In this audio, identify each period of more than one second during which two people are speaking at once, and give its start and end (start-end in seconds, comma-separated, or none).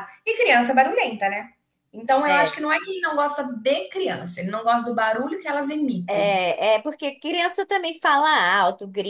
none